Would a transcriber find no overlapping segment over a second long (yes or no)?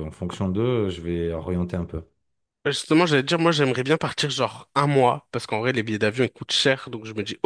yes